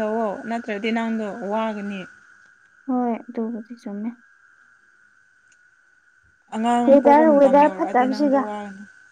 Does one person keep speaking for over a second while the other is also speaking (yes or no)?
yes